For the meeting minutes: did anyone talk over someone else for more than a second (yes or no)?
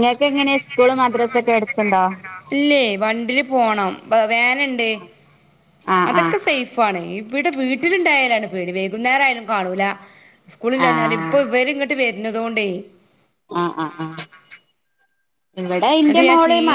no